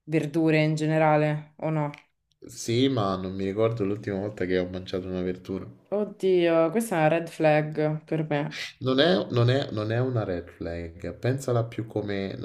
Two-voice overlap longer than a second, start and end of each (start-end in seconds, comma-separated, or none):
none